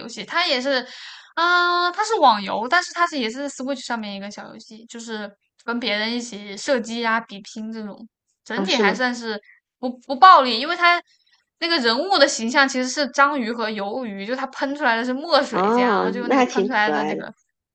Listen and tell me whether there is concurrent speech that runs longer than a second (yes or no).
yes